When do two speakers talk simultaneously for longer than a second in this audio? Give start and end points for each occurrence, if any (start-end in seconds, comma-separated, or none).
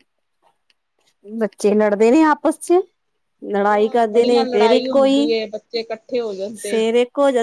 3.5-5.3